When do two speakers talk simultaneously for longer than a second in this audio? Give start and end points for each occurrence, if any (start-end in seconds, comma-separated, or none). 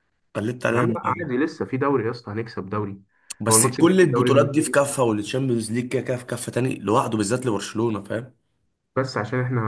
3.5-4.8